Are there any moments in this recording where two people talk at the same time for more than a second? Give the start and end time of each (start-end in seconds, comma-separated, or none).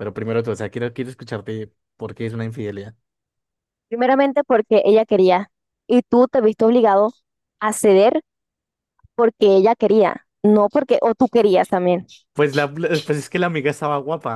none